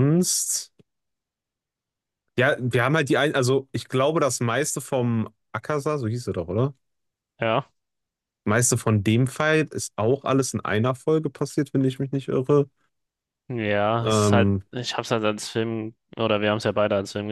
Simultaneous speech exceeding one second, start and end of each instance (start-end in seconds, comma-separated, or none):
none